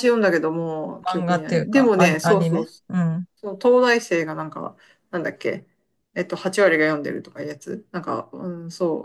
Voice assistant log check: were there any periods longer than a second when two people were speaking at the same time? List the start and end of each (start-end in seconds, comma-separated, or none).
1.1-3.0